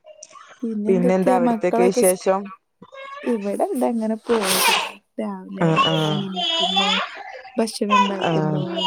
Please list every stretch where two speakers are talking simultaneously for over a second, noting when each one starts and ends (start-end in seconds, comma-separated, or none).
0.9-2.2